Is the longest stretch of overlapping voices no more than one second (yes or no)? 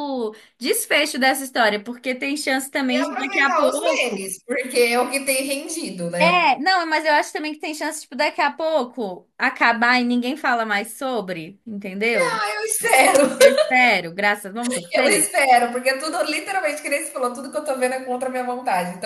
no